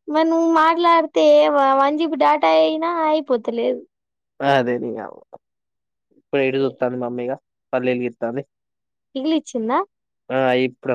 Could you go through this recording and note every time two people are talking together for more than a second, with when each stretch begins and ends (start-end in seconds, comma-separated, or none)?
none